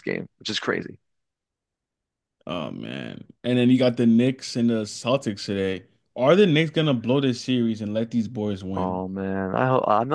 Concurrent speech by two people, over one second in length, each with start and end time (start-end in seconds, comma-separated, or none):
none